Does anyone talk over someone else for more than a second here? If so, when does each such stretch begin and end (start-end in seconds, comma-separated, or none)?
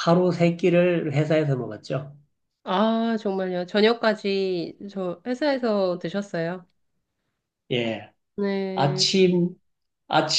none